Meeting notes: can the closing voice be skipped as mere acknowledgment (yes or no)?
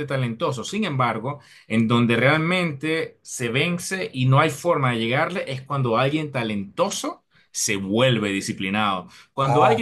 yes